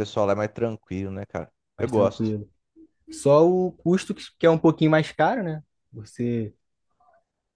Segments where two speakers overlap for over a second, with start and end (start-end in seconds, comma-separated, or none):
none